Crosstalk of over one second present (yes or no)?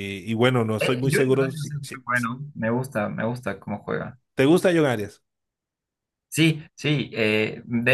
yes